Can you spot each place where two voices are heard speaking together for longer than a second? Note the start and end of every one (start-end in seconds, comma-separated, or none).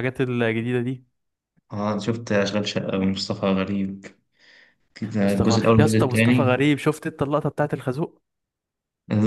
5.2-6.6